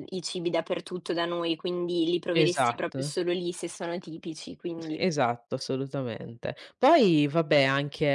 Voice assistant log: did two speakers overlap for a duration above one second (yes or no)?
no